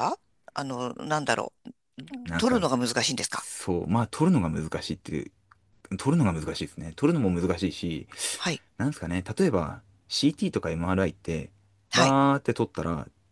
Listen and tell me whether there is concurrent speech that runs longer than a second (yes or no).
no